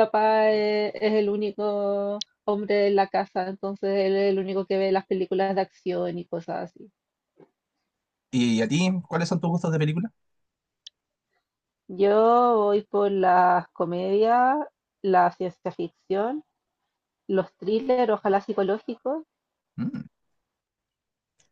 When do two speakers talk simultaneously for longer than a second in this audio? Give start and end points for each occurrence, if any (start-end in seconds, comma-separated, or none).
none